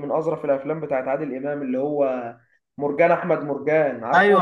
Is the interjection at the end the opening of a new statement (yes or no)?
yes